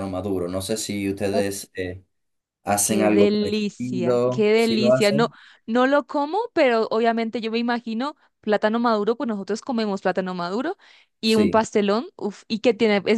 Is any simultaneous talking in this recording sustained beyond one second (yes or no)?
yes